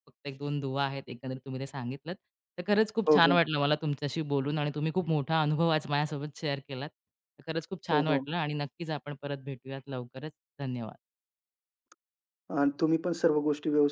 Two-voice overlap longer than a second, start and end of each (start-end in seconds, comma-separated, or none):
none